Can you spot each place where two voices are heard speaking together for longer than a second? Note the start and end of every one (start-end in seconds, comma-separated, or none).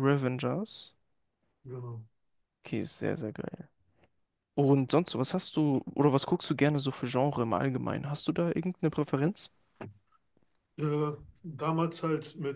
none